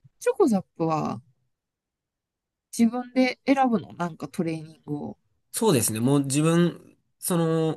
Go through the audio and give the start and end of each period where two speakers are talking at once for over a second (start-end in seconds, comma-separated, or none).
none